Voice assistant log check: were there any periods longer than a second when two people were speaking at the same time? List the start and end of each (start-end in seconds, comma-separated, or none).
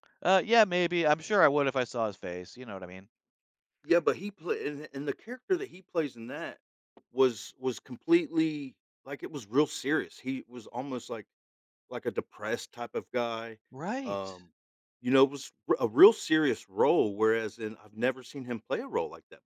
none